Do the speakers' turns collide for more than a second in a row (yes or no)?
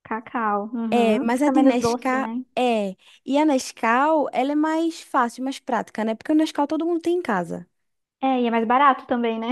yes